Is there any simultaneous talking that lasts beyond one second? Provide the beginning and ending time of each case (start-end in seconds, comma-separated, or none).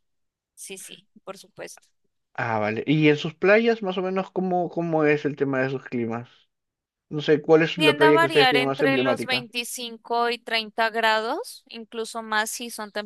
7.8-9.5